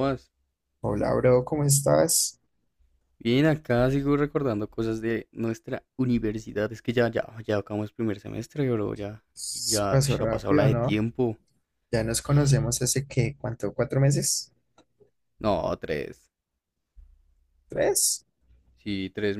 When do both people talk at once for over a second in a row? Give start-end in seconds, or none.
9.6-11.0